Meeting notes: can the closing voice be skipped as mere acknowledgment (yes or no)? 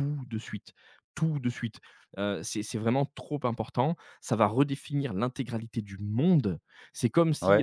yes